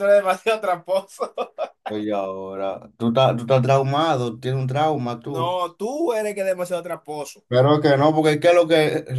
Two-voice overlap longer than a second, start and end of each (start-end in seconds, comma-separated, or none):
none